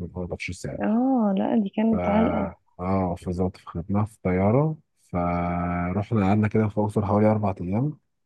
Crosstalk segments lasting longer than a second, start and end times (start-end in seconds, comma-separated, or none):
none